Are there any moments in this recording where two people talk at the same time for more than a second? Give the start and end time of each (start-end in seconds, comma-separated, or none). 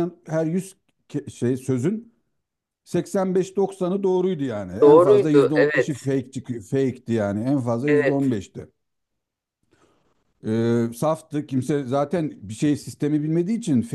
4.8-6.1